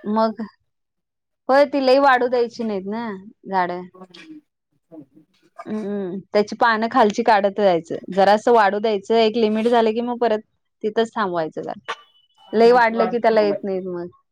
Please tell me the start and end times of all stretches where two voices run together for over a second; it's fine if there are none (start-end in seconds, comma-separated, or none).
12.5-13.8